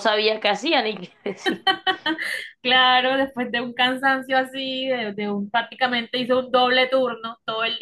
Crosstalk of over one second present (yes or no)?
no